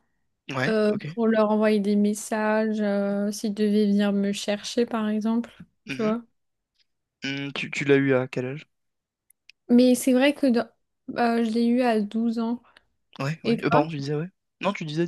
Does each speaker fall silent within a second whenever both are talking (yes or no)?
yes